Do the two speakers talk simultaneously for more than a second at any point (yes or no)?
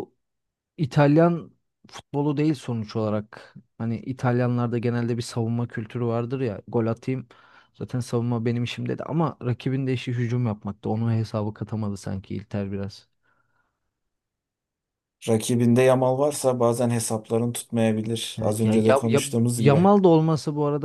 yes